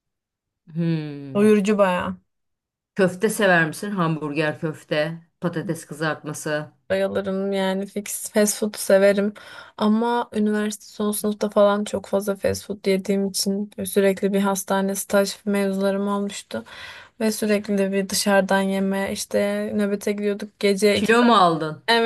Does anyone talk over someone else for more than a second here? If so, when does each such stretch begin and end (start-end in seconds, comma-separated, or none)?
none